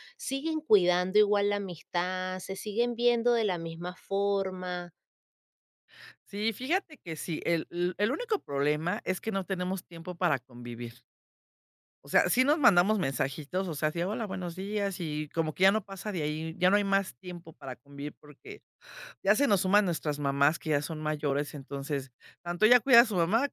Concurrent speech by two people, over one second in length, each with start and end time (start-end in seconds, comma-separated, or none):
none